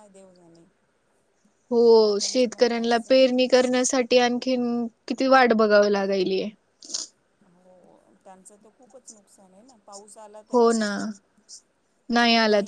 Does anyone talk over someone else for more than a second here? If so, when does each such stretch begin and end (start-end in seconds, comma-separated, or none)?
2.2-3.6